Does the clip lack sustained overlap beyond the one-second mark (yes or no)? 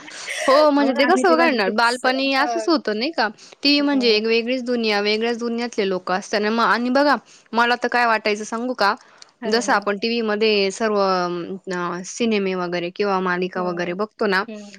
no